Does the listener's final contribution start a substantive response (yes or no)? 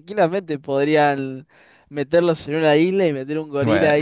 yes